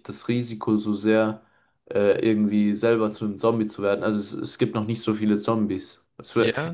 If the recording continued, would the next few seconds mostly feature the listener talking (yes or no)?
no